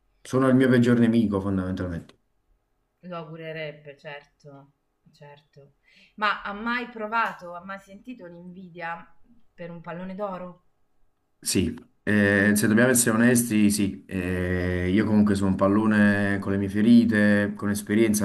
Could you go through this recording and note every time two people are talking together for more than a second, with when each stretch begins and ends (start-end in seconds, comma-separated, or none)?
none